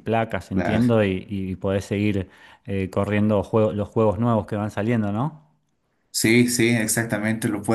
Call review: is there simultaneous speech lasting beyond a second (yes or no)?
no